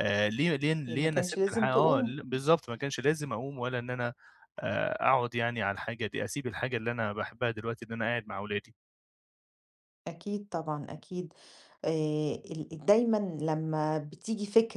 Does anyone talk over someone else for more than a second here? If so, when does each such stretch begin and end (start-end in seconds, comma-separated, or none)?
0.9-2.1